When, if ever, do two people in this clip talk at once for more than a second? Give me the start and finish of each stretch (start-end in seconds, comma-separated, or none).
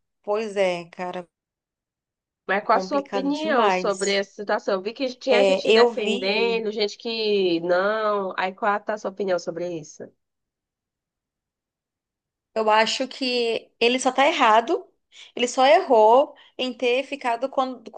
2.7-4.1, 5.3-6.7